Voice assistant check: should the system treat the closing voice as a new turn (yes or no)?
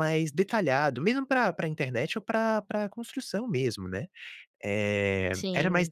no